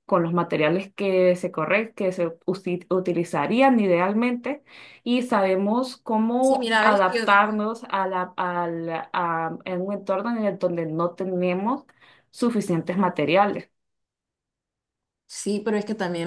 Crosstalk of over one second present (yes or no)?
yes